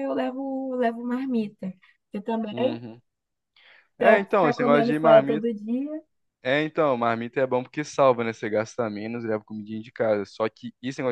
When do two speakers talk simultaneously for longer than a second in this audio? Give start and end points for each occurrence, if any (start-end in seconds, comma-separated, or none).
4.0-5.5